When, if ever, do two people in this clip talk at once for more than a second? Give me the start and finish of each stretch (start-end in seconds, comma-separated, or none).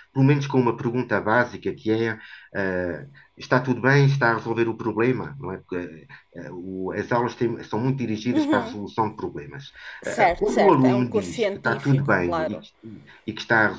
10.0-12.6